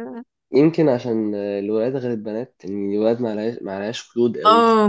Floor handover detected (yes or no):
yes